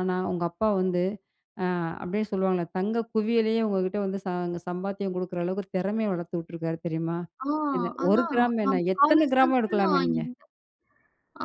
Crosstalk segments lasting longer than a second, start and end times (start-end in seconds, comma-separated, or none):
8.0-10.2